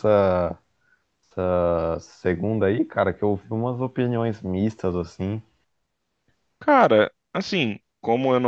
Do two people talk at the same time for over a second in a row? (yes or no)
no